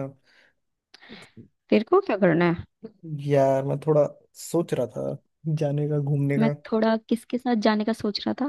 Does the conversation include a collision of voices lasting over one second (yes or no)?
no